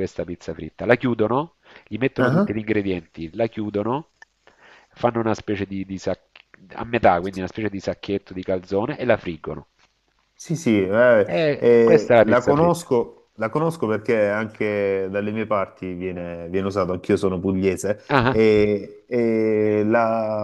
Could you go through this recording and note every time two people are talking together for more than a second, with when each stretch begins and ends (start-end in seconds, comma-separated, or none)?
11.2-12.9